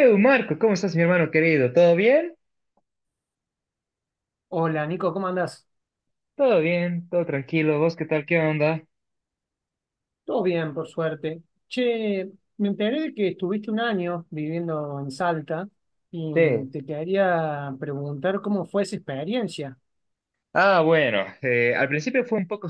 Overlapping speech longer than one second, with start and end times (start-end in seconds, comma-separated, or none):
none